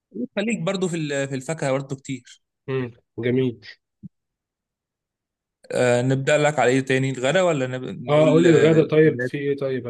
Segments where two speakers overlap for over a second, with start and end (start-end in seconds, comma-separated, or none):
8.1-9.3